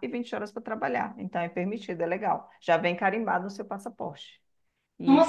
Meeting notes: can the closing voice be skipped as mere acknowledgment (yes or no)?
no